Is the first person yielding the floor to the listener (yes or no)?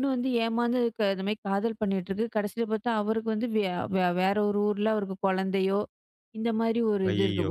no